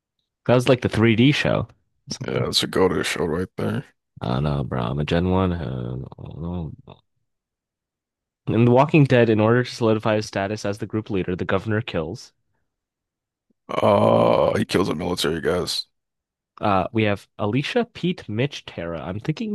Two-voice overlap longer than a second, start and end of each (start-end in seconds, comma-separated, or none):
none